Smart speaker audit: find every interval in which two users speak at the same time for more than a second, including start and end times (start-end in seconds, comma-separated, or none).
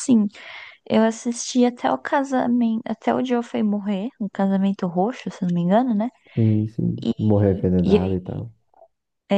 none